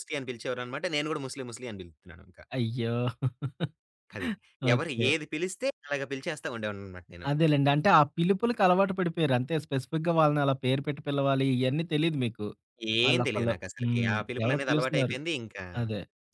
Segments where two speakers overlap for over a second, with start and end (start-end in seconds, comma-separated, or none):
13.1-15.2